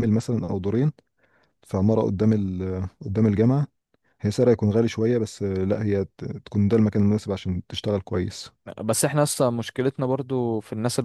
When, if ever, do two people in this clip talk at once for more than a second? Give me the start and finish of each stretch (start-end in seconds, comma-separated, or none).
none